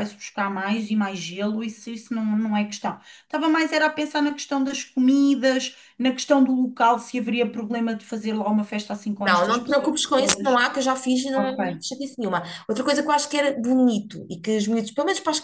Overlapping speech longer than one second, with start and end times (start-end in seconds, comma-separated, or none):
9.2-10.6